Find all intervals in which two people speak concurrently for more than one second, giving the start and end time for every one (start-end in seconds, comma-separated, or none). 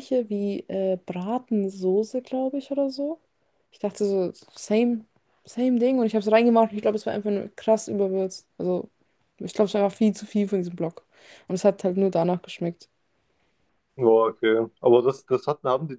none